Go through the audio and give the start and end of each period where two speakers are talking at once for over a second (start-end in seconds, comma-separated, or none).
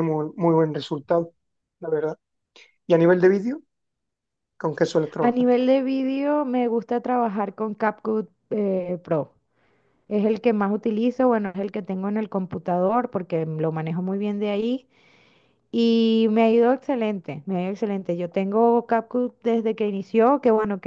none